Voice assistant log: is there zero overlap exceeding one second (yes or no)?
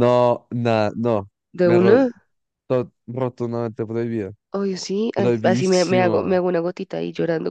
no